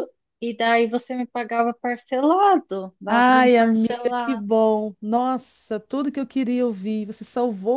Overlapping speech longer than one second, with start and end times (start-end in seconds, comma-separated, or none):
3.1-4.4